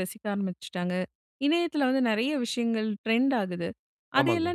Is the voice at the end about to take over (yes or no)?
no